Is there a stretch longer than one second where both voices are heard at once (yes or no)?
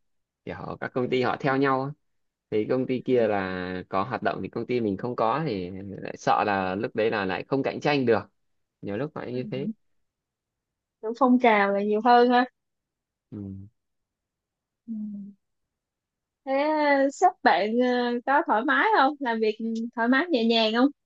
no